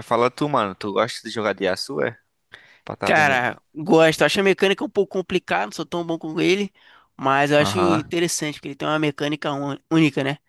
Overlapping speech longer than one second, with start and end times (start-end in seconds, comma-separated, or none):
none